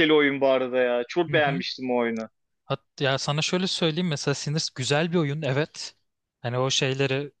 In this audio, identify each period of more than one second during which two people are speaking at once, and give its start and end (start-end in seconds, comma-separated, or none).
none